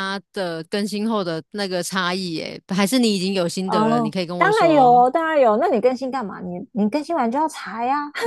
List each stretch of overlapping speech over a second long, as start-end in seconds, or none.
3.6-5.0